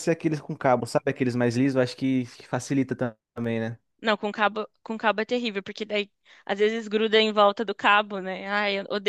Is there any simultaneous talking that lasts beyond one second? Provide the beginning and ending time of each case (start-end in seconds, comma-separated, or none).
none